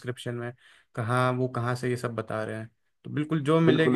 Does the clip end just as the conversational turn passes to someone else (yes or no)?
yes